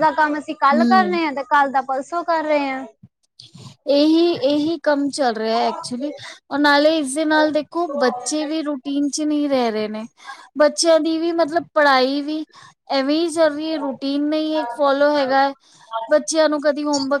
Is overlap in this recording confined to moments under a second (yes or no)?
yes